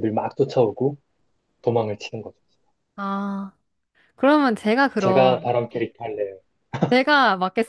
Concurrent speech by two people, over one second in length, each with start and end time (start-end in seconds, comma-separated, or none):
none